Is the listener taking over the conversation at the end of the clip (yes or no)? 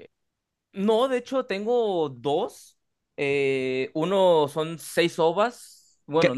yes